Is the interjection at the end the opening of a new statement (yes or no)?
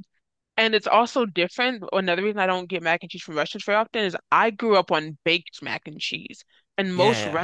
no